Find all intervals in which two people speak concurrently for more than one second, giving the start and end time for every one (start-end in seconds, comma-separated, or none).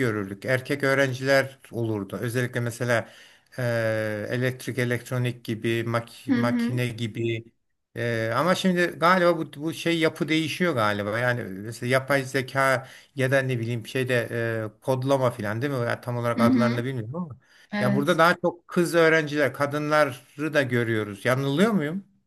none